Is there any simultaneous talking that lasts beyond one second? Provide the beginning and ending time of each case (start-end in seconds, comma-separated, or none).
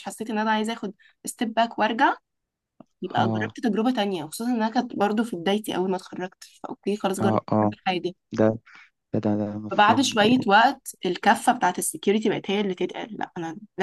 none